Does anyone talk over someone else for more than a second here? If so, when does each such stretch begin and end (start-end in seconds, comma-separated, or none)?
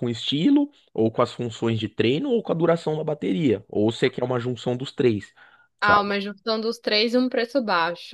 none